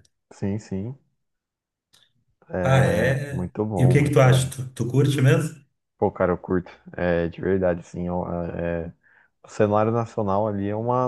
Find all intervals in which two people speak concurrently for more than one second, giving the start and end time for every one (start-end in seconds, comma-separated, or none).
2.6-4.5